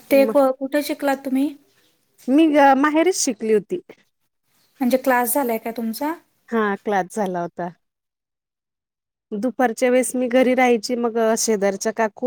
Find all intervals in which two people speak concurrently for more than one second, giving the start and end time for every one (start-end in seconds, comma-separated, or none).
none